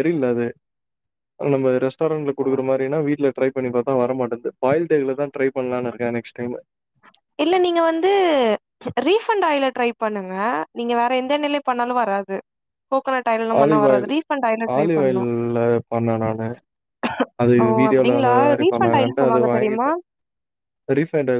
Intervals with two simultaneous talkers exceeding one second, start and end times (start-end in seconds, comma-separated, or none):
17.6-19.9